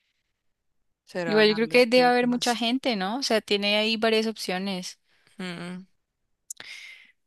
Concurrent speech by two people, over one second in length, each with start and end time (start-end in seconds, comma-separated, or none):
1.2-2.6